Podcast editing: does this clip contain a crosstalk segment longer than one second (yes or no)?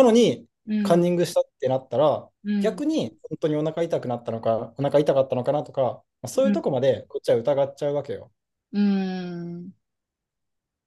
no